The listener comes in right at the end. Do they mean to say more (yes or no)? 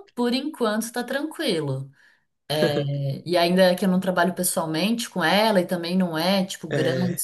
no